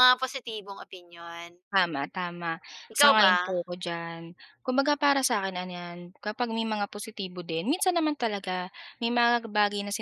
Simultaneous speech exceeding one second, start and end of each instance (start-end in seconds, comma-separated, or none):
none